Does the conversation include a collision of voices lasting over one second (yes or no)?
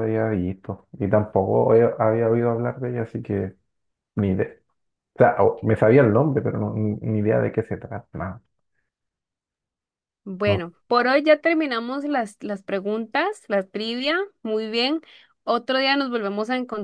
no